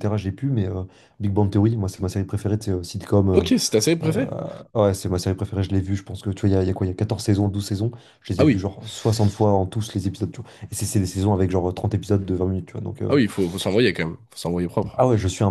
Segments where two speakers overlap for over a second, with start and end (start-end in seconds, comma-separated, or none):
none